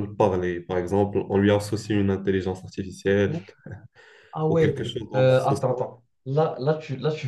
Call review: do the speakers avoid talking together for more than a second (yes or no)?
no